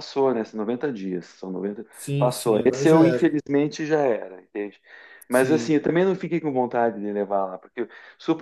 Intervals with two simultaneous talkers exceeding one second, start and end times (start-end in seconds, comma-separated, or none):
1.9-3.4